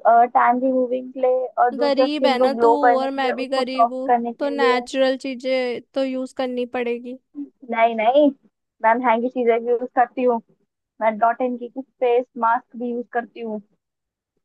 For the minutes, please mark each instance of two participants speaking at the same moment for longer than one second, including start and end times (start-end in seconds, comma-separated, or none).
1.8-4.8